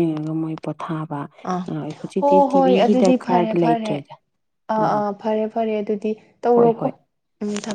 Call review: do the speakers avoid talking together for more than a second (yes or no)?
no